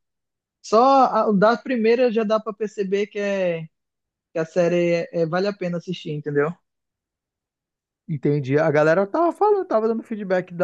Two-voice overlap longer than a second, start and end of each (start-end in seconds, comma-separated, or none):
none